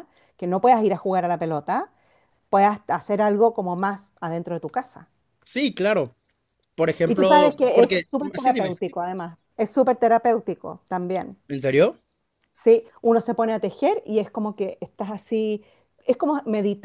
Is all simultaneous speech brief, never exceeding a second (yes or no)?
no